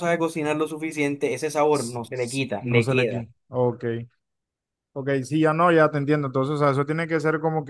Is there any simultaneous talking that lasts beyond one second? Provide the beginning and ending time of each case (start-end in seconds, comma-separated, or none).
1.7-3.3